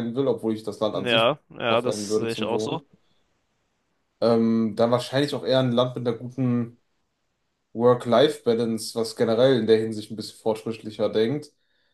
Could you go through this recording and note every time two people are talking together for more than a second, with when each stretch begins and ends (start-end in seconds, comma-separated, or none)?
0.9-2.8